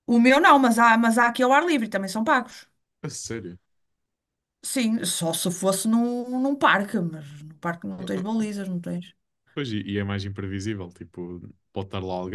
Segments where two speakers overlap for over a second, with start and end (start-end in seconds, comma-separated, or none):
none